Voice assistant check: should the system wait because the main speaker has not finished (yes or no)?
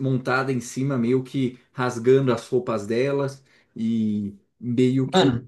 yes